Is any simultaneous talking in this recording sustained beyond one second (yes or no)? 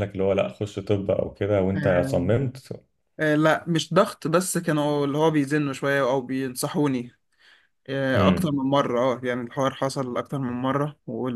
no